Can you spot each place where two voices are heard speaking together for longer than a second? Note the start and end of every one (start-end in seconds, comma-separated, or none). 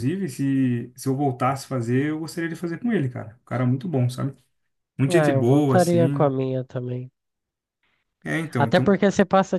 5.1-6.3